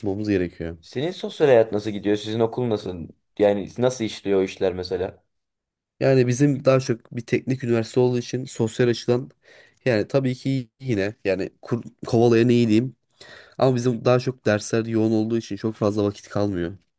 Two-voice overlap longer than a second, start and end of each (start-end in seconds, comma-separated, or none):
none